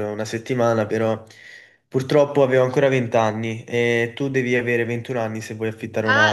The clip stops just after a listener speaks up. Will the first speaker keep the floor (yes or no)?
no